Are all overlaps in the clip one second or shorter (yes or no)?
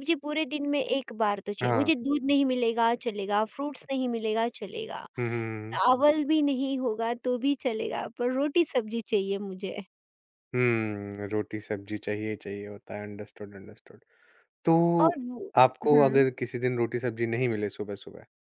yes